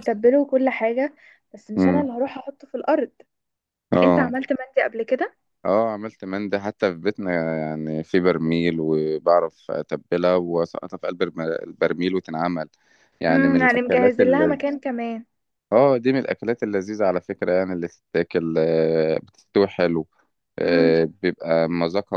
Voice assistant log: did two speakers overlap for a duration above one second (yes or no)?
yes